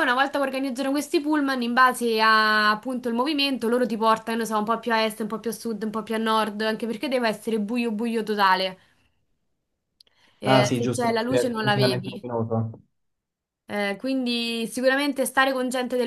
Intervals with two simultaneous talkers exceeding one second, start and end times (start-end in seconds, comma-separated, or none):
10.4-12.2